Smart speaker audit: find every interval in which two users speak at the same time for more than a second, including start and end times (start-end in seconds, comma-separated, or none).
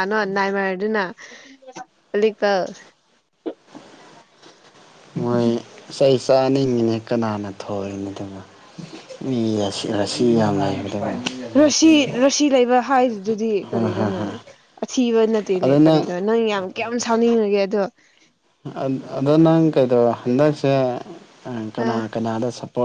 none